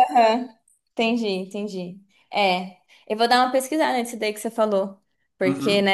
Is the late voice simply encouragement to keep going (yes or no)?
yes